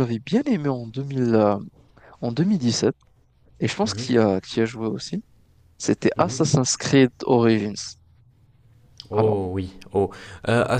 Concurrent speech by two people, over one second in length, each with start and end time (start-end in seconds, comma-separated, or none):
none